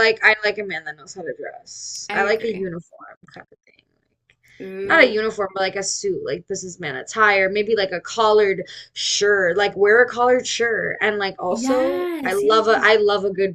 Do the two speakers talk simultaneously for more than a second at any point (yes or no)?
yes